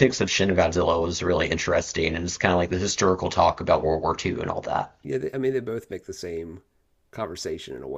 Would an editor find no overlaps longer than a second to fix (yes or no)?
yes